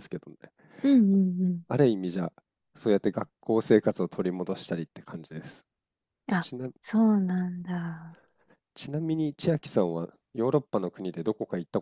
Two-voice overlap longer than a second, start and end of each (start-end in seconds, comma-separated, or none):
none